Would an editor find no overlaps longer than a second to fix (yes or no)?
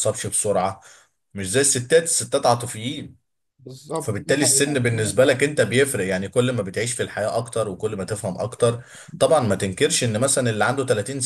no